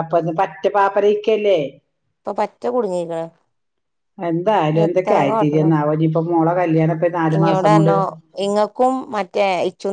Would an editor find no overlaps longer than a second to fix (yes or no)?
yes